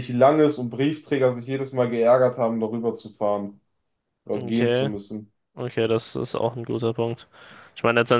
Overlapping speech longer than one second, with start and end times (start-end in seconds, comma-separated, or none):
none